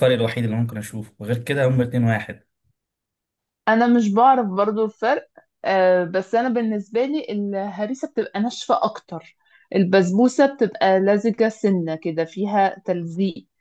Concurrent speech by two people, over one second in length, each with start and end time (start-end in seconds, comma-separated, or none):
none